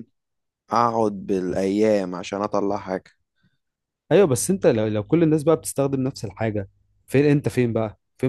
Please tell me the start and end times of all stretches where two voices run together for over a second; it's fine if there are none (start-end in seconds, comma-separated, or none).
none